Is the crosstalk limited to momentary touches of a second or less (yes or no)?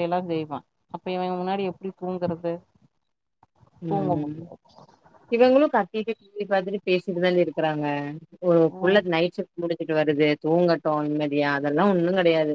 yes